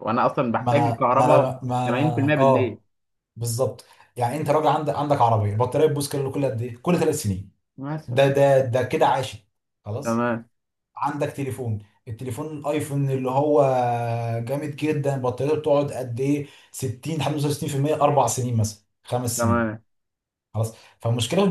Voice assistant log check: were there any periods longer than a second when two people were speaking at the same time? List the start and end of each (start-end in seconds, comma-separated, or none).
0.6-2.8